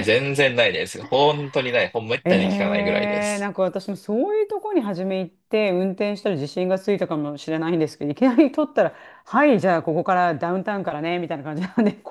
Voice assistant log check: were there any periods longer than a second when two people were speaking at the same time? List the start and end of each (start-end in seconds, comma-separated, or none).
2.2-3.5